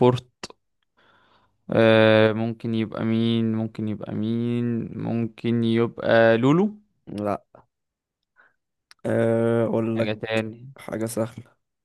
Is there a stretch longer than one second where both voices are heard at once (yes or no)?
no